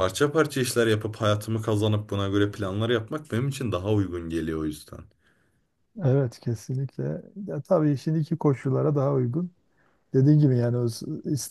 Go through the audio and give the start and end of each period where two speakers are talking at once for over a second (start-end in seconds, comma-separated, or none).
none